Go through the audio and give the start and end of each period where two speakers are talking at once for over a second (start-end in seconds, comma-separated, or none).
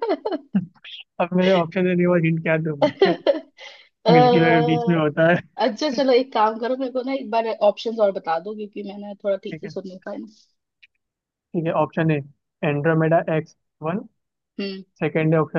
none